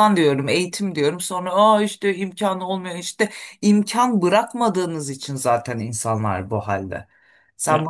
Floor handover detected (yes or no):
no